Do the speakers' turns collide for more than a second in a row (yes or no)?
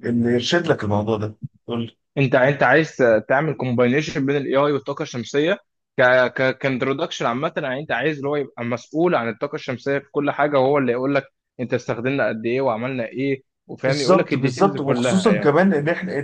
yes